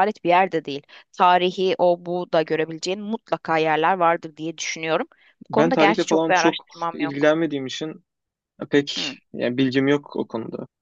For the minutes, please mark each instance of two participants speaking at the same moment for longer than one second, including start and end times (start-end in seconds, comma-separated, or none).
5.5-7.3